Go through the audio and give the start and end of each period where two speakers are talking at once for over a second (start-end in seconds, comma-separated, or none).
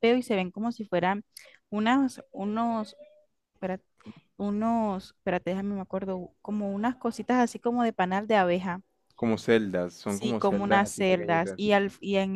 10.1-11.7